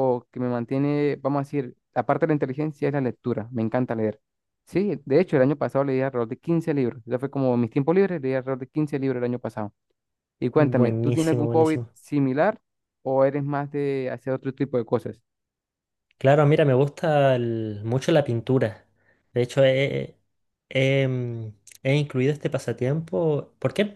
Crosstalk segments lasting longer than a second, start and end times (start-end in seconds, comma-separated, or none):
10.6-11.9